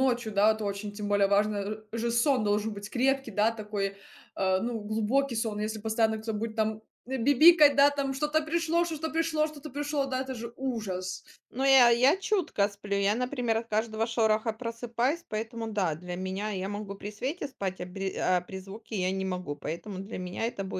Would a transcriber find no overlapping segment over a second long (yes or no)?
yes